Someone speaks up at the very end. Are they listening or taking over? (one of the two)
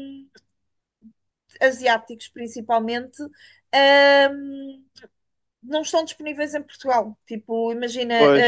listening